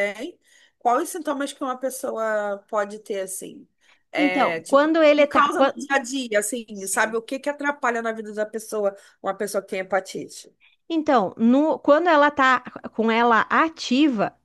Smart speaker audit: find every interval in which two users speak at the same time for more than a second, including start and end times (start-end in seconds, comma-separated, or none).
4.2-5.7